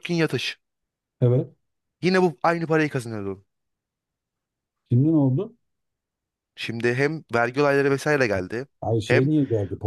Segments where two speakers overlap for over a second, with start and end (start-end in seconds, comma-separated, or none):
none